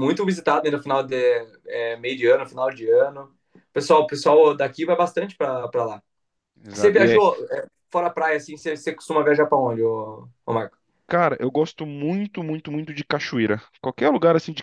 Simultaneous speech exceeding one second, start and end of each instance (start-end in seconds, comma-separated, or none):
none